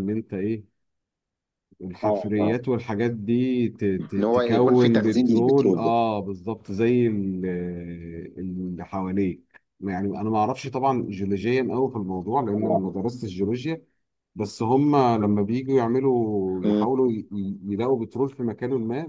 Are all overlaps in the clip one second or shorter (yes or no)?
no